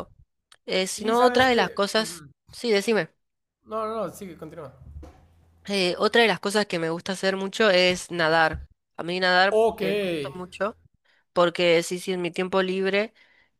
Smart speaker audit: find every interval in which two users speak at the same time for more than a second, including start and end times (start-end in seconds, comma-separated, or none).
1.0-2.3